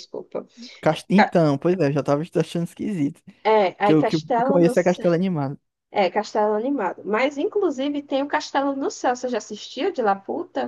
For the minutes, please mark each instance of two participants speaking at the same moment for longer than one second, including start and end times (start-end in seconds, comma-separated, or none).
3.8-5.1